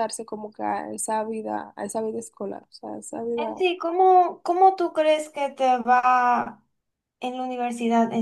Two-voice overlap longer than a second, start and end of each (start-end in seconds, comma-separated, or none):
none